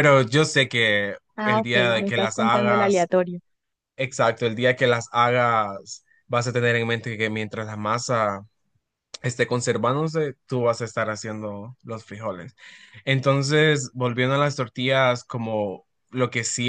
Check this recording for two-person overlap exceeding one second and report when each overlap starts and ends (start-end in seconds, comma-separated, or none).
1.4-3.1